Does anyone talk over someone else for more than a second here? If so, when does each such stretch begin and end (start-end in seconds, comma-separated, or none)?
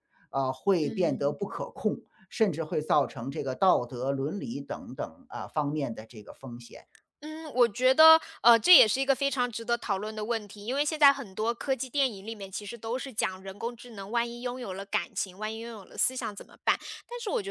none